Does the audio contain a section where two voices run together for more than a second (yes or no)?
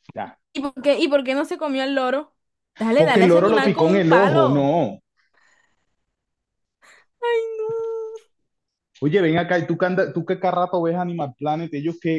yes